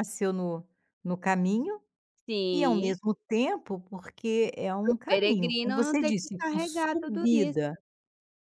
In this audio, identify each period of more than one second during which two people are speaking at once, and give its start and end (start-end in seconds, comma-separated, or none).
4.8-7.6